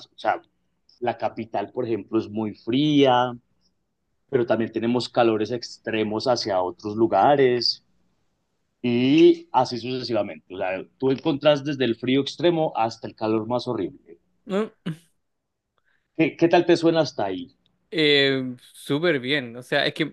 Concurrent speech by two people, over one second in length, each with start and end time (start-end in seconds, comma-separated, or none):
none